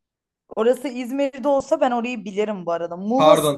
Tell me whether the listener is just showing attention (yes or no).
yes